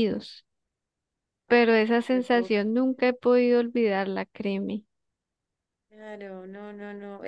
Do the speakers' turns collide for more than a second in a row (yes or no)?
yes